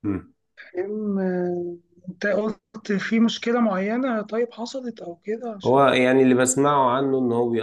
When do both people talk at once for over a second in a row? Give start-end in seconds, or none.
none